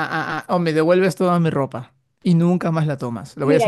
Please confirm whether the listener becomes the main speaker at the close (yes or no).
yes